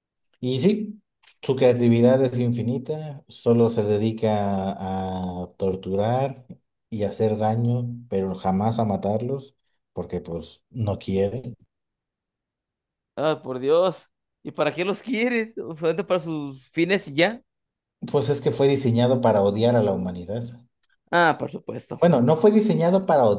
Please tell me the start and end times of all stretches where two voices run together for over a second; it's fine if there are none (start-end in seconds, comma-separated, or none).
none